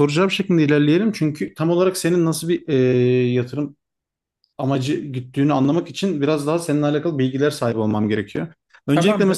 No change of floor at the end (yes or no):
yes